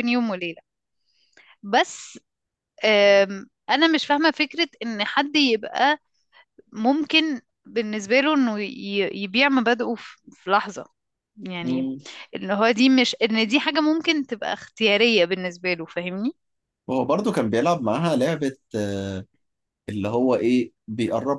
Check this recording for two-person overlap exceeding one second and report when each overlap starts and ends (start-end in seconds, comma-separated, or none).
none